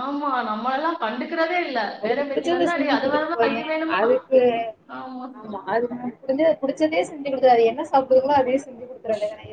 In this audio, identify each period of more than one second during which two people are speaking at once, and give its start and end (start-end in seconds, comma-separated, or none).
none